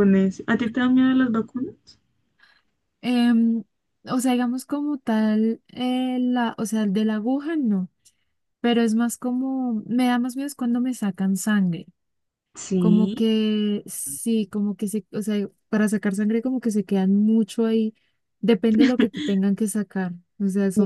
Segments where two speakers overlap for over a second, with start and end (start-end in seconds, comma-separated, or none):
none